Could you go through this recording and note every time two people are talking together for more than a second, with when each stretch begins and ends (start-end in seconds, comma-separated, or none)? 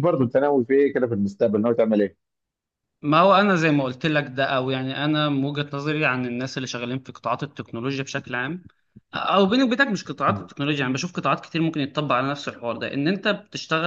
none